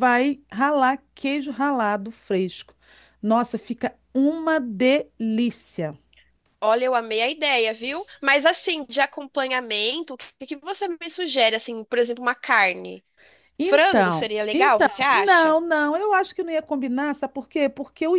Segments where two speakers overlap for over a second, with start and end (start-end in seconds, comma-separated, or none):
13.6-15.6